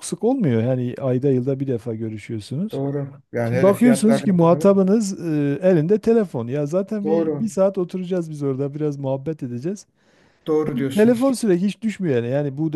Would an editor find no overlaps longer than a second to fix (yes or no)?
no